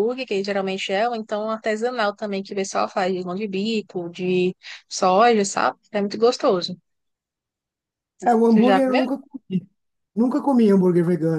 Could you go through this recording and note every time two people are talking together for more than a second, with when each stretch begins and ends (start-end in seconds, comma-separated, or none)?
none